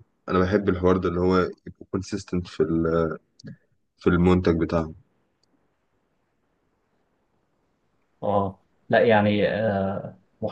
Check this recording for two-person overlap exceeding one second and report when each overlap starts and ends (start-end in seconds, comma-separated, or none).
none